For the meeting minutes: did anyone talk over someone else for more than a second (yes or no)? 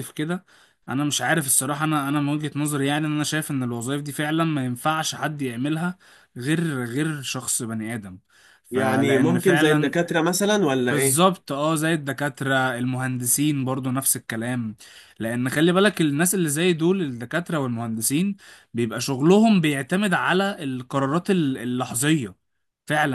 yes